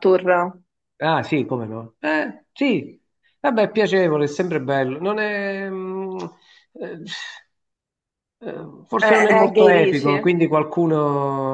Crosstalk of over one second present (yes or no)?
yes